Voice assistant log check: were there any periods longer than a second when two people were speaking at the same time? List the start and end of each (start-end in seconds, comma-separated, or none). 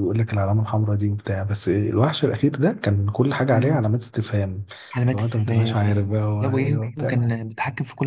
5.1-7.3